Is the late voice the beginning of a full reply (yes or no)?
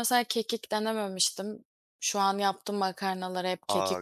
yes